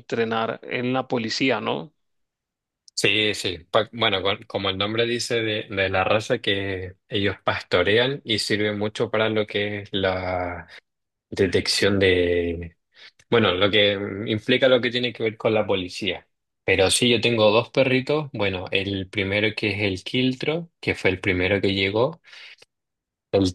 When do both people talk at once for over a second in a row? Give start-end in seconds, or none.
none